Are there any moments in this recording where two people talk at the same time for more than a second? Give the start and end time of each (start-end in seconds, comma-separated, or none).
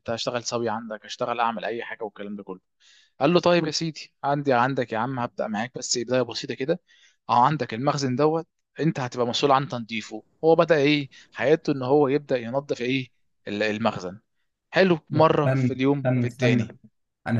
15.1-16.7